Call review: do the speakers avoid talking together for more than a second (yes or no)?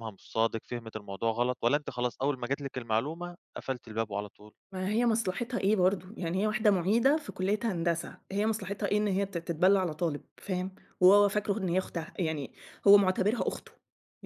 yes